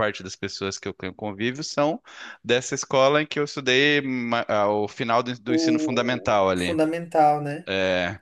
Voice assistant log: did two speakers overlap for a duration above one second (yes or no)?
yes